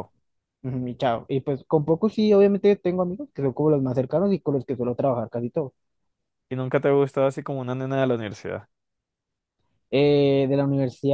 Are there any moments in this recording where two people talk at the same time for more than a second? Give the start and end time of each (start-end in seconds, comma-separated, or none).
none